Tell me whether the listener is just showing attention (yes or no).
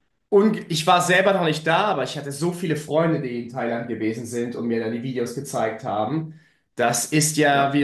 yes